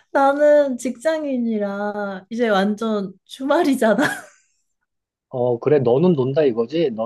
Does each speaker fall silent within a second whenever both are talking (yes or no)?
yes